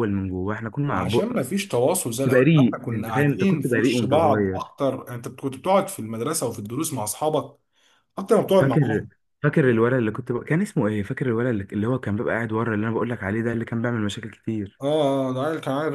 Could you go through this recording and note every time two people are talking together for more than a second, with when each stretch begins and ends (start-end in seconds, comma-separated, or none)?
2.2-4.7